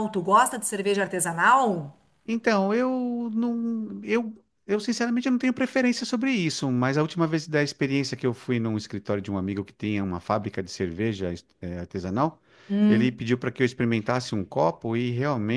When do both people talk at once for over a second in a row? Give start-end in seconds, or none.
none